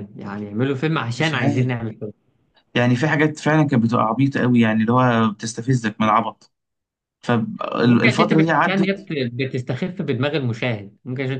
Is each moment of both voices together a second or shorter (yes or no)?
no